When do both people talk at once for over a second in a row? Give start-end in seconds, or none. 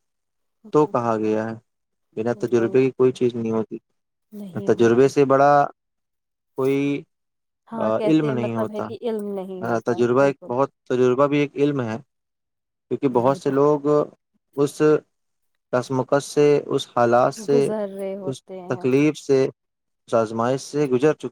8.1-10.5